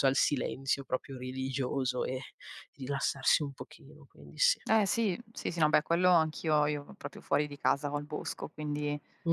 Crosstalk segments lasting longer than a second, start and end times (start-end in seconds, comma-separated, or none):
none